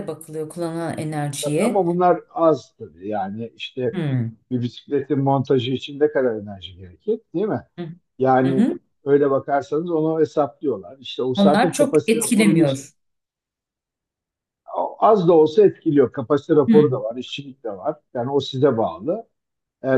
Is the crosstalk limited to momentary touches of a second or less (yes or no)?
no